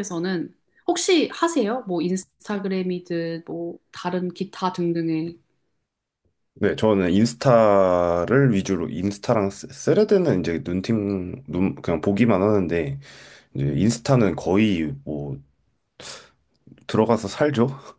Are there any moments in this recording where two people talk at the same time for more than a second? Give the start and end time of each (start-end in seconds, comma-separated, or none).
none